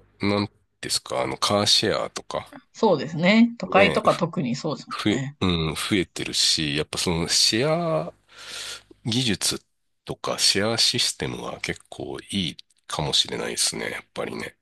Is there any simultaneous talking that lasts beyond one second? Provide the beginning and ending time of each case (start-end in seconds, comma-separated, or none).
none